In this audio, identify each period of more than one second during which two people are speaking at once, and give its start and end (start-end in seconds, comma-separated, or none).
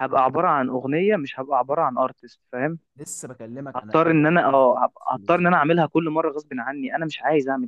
3.8-5.5